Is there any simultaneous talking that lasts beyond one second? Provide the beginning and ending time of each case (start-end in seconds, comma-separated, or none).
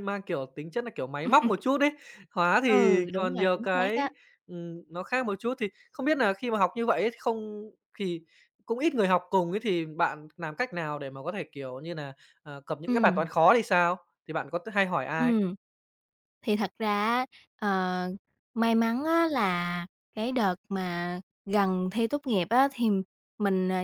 2.7-4.1